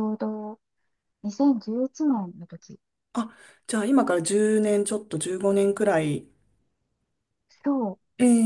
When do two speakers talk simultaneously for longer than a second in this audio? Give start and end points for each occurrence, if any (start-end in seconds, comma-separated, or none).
none